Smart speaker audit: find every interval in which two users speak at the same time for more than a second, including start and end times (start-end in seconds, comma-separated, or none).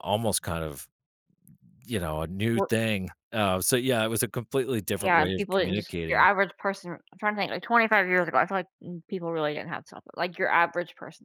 5.0-6.3